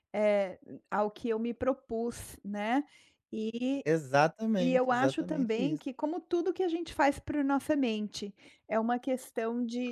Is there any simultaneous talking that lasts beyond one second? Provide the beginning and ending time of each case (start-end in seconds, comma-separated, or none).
4.6-5.8